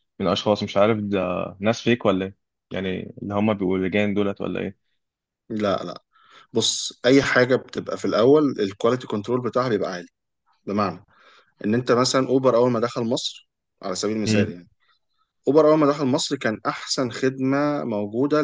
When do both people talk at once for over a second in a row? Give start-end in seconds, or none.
none